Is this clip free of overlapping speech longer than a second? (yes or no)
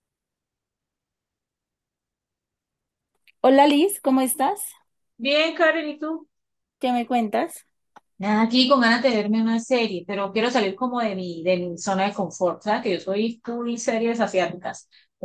yes